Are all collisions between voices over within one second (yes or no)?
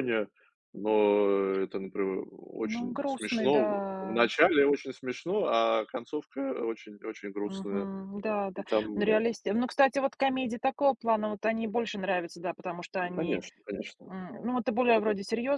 no